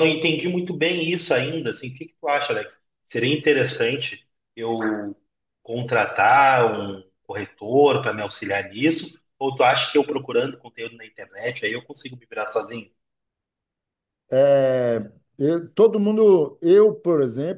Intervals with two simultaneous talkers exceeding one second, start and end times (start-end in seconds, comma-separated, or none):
none